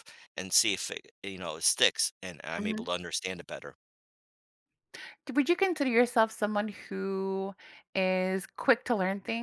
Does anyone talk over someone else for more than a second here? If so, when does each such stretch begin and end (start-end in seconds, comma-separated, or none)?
none